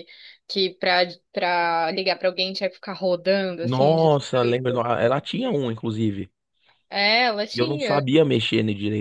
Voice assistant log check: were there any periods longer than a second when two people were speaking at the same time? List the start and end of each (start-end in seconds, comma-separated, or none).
3.6-4.8